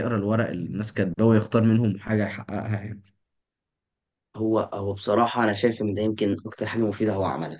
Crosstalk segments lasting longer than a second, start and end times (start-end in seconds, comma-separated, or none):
none